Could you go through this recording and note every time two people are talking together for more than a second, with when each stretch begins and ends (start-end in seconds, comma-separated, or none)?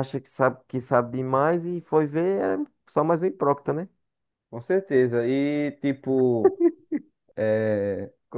none